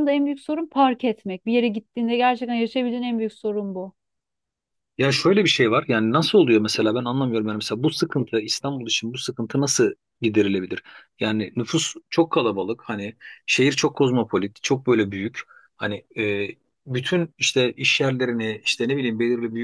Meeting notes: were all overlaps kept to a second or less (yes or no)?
yes